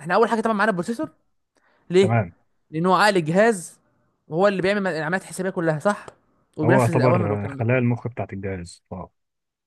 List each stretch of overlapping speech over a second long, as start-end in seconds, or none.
6.6-8.0